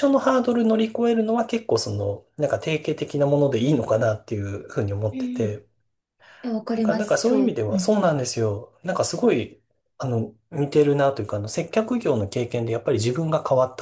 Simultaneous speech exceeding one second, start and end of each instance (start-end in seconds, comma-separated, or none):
6.7-8.0